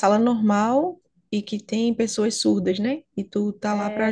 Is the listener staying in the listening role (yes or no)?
no